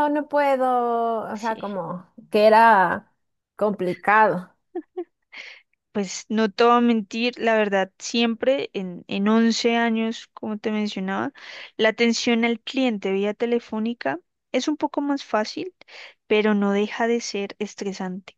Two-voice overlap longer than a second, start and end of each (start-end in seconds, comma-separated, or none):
none